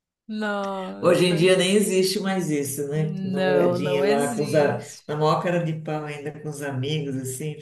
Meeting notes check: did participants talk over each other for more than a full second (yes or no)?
yes